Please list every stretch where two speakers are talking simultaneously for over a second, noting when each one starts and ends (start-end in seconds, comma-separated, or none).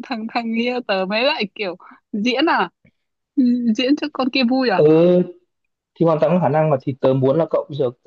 none